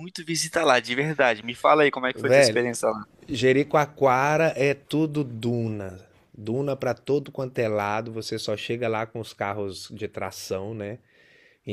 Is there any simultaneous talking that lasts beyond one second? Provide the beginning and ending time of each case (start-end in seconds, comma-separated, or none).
none